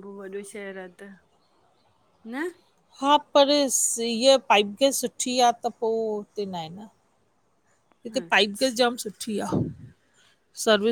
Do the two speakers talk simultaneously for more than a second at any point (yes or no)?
no